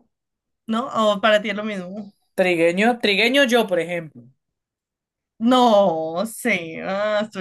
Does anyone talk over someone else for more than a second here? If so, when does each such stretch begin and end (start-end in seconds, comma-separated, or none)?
none